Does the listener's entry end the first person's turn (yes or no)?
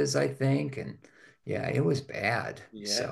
no